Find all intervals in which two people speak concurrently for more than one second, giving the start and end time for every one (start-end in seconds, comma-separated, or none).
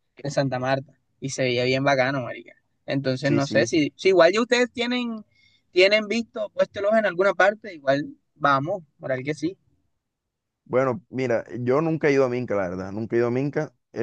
none